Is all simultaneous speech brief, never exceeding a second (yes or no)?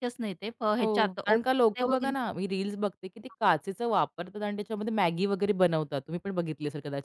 no